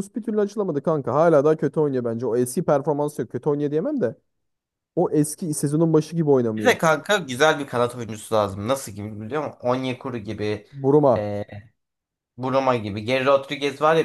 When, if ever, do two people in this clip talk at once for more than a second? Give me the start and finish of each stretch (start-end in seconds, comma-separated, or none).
none